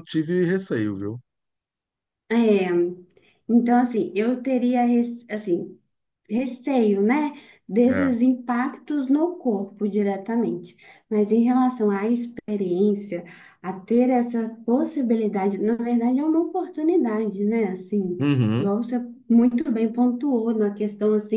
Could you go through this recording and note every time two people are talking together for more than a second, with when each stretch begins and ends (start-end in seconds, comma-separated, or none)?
none